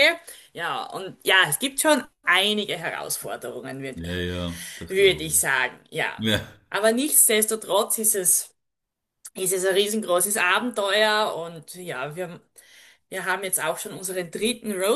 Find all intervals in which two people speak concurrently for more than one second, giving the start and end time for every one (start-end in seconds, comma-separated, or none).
none